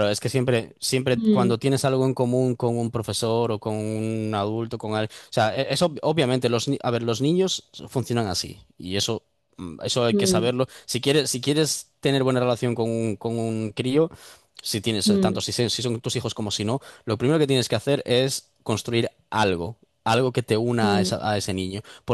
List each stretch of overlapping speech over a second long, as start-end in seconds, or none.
none